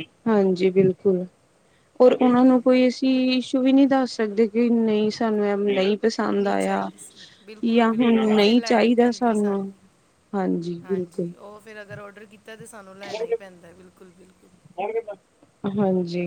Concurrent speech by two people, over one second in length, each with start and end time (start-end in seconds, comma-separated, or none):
7.6-9.1